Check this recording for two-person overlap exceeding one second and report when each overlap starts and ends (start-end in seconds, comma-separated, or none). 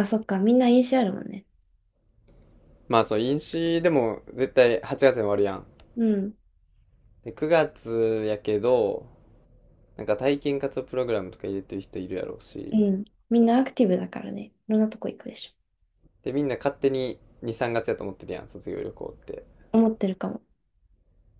none